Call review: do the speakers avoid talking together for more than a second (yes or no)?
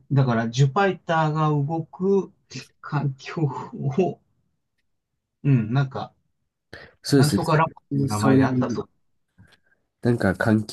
no